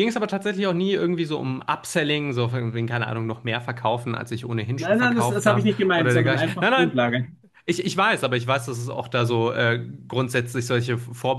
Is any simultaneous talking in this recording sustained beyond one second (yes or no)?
yes